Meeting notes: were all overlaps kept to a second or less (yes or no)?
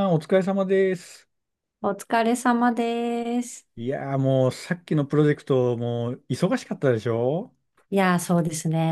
yes